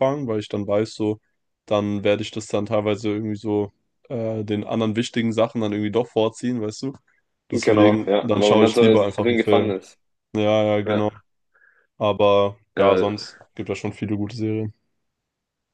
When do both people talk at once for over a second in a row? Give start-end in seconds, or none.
7.5-9.7